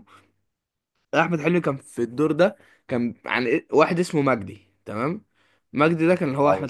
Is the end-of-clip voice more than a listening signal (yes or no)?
no